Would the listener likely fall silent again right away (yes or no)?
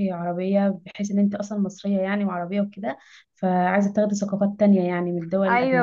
no